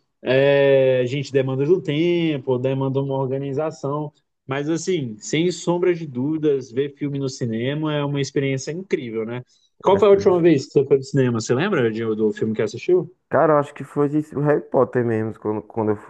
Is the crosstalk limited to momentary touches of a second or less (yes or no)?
yes